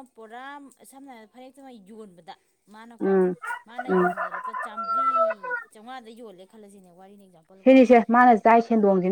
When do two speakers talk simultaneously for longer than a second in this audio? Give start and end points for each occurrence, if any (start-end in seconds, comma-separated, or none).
none